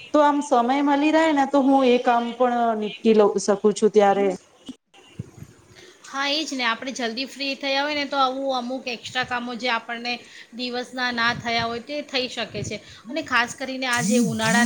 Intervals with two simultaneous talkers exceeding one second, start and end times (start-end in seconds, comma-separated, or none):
none